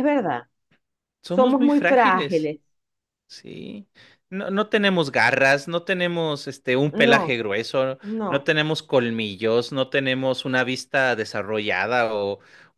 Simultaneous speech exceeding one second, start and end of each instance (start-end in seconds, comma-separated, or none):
1.2-2.5